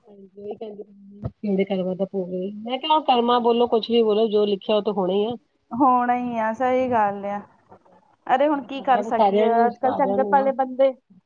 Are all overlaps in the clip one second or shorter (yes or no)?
no